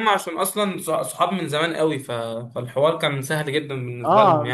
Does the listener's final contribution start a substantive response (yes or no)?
yes